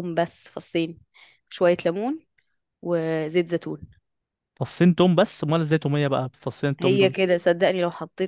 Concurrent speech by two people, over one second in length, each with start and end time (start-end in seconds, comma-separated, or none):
none